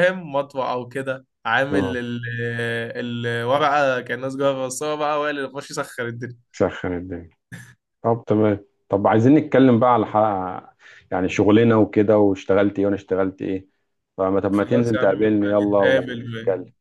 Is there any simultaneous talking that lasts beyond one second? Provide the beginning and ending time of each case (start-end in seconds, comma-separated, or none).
14.6-16.2